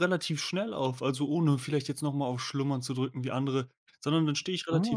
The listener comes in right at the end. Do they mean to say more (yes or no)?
no